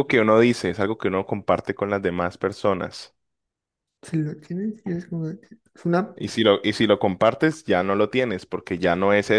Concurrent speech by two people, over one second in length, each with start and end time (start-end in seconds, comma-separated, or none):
none